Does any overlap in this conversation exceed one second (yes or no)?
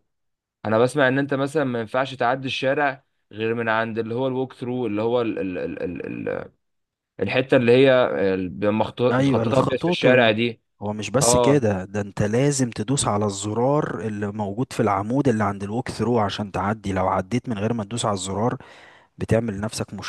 yes